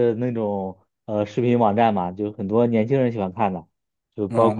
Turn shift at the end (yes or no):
yes